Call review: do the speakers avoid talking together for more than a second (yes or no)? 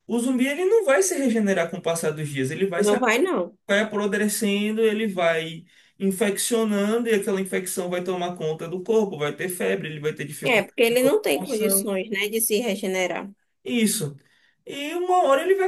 no